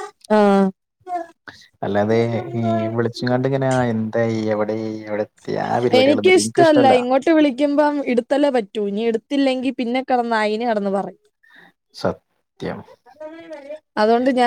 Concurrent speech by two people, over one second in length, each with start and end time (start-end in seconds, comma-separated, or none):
none